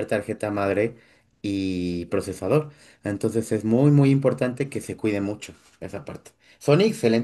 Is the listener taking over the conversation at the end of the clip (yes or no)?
no